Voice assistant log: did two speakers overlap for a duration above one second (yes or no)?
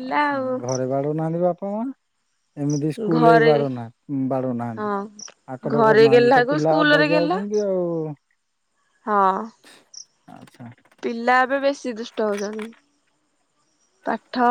yes